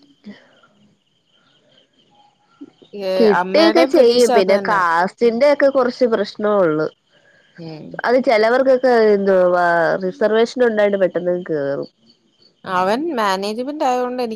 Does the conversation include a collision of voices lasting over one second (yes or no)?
yes